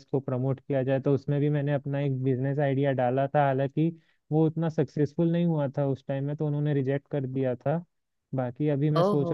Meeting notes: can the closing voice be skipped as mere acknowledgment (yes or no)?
yes